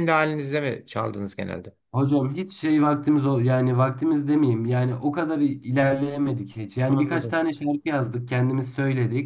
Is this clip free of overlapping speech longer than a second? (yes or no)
yes